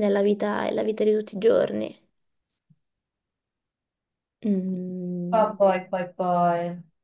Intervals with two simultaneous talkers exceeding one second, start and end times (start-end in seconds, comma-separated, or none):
none